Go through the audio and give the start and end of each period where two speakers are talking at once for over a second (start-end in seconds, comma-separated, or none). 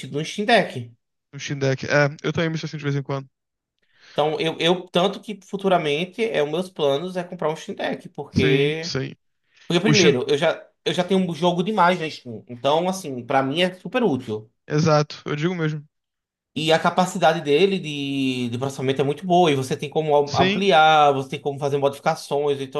none